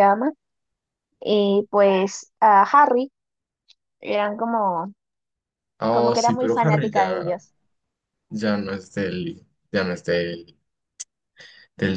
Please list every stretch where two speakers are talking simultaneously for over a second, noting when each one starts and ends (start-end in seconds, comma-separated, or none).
5.9-7.3